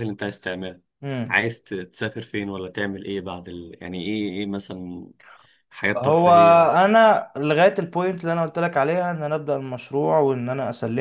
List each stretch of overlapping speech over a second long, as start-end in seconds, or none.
none